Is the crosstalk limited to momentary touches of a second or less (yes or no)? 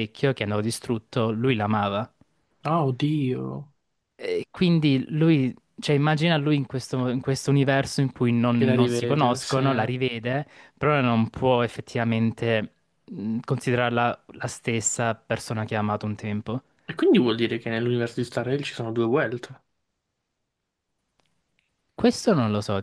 no